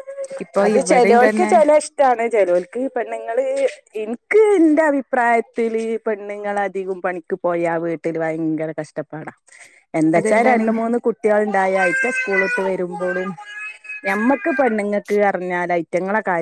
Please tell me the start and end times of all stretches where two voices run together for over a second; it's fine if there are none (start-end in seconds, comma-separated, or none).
none